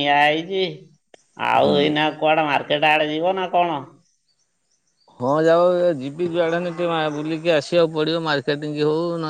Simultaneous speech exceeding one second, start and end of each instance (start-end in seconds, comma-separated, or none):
none